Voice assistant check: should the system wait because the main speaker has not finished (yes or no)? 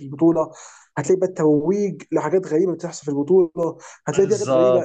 yes